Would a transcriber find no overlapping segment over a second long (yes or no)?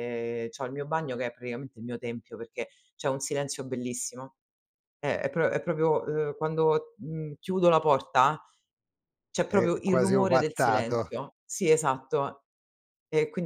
no